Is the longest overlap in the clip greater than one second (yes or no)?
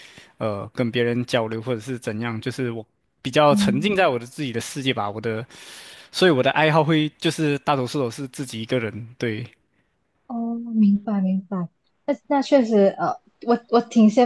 no